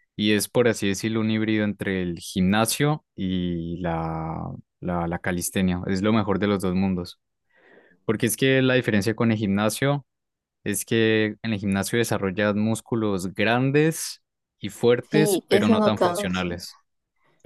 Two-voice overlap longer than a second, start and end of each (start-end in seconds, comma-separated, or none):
15.1-16.6